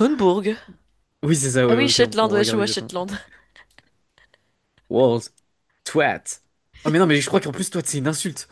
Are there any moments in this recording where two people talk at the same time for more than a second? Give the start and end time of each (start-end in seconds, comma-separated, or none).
1.7-2.9